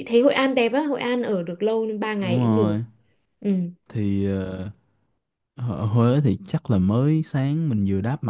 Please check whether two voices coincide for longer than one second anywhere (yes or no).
no